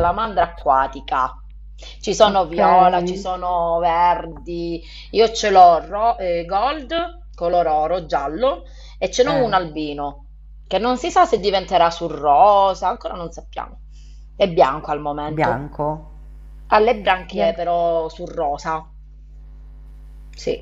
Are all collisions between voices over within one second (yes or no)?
yes